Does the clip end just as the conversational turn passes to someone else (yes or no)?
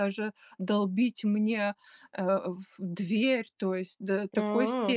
no